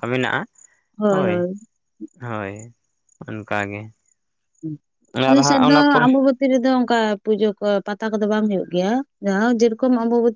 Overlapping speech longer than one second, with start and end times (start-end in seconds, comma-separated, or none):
none